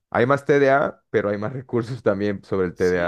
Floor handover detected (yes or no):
yes